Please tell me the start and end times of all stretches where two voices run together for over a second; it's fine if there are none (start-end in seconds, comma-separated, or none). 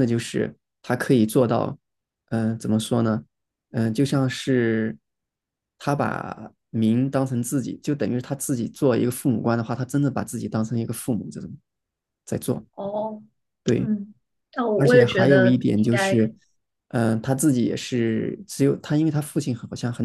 14.7-16.2